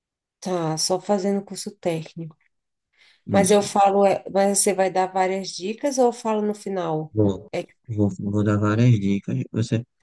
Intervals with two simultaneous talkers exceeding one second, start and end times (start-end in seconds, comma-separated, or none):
none